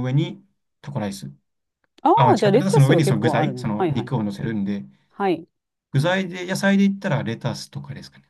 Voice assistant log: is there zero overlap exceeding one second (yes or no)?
no